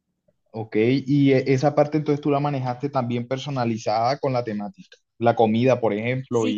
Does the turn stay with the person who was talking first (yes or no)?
no